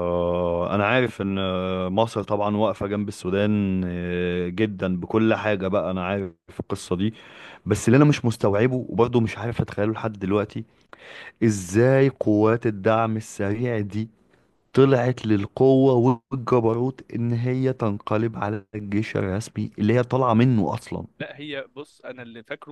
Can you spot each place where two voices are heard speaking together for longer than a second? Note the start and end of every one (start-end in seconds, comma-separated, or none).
none